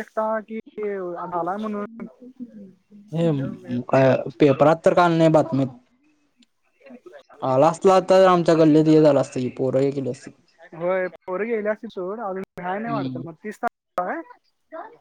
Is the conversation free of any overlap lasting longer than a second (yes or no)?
yes